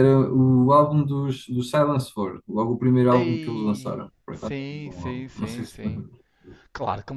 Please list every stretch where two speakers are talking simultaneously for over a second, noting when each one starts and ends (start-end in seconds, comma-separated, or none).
3.1-5.7